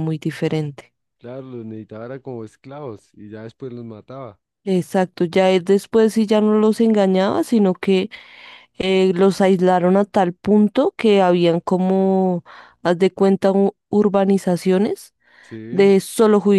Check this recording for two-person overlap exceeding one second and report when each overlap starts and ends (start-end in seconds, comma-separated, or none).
none